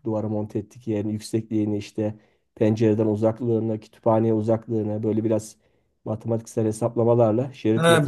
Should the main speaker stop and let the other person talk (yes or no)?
yes